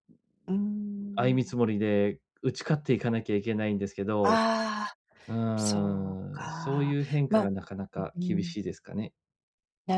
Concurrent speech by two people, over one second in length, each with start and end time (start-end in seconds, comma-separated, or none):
5.6-7.5